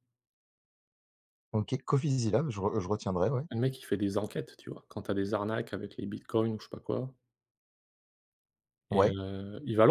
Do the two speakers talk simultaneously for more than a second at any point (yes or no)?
no